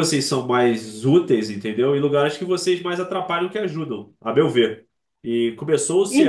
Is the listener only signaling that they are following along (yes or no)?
no